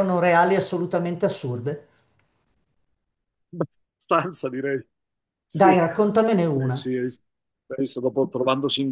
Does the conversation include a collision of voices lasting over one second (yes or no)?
no